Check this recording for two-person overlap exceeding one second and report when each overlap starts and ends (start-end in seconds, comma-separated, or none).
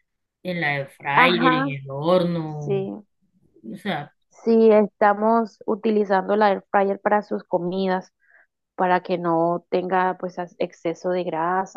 none